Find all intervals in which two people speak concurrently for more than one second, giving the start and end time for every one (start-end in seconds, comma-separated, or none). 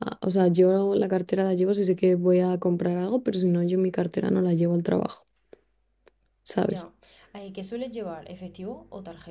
none